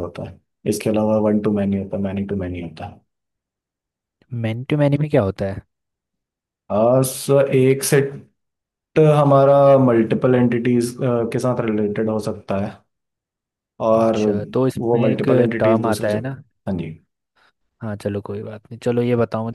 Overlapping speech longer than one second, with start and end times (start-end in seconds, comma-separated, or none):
14.8-16.3